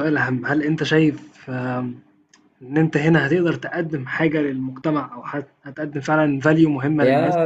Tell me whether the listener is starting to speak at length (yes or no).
yes